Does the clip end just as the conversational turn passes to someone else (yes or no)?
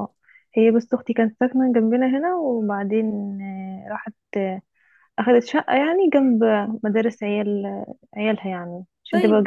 yes